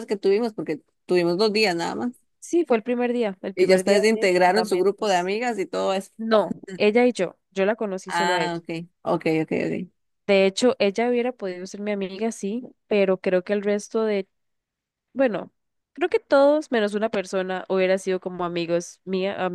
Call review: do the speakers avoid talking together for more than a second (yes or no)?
no